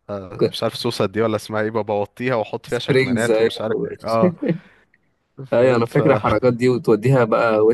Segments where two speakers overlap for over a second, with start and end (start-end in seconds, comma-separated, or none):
2.7-3.9